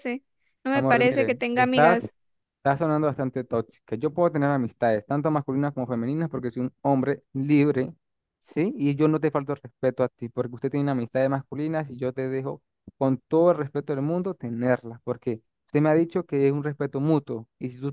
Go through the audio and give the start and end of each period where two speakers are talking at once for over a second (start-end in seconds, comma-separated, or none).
0.7-2.0